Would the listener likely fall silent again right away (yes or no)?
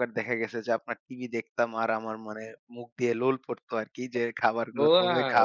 no